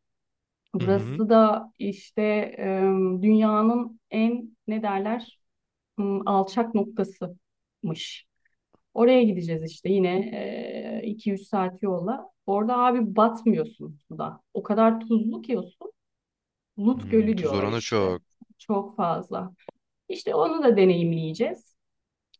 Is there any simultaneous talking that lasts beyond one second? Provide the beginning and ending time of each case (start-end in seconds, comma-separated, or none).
16.9-18.2